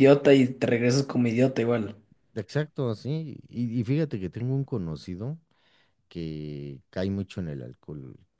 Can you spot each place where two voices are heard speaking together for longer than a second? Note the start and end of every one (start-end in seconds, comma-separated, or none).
none